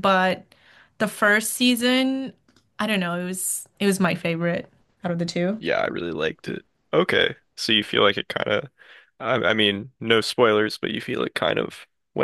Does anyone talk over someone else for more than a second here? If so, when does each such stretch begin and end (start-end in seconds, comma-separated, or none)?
none